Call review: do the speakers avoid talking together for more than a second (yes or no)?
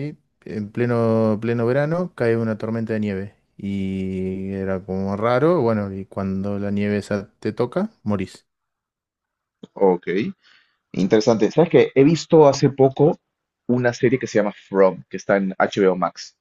yes